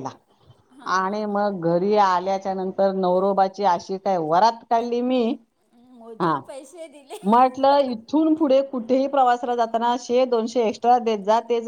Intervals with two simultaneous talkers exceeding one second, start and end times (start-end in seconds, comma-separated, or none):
none